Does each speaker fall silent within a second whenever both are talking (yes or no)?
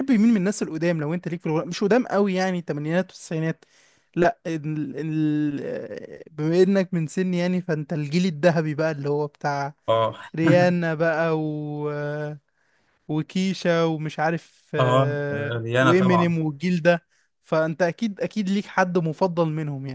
no